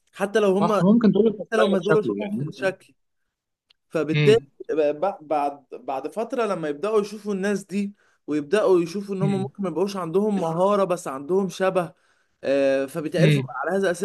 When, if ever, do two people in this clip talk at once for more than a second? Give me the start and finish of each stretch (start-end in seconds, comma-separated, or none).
1.5-2.7